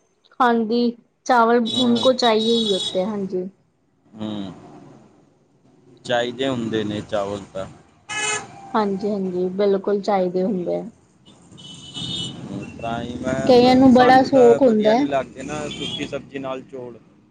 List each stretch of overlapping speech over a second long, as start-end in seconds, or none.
13.5-15.0